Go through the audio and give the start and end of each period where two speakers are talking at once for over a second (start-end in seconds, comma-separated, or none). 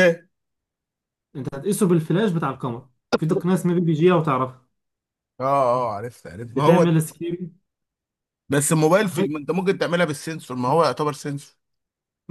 none